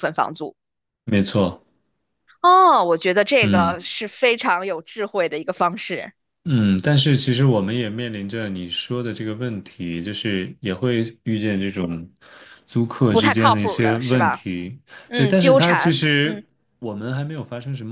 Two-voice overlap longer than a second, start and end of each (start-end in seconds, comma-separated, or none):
13.1-14.4, 15.1-16.4